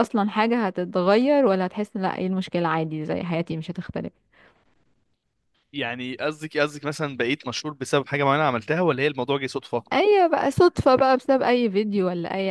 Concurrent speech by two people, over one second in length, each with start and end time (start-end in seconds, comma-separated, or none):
none